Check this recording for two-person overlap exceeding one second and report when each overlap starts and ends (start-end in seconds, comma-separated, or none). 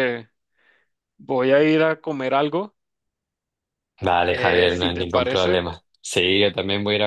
4.3-5.6